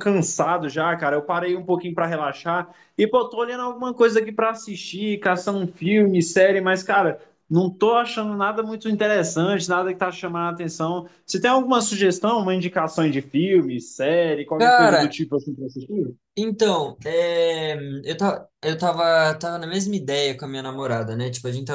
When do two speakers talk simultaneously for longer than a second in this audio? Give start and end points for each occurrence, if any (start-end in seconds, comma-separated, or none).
none